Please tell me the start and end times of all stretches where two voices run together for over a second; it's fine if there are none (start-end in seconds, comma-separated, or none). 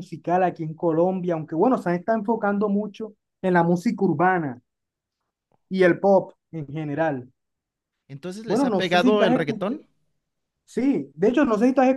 8.4-9.8